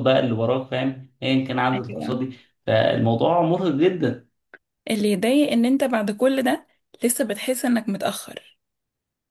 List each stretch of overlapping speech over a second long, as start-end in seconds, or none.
none